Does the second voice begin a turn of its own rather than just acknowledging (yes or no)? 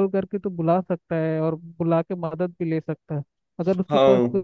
no